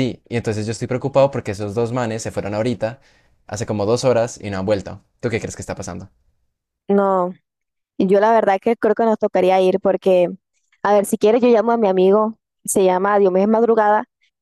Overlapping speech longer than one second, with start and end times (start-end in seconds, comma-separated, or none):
none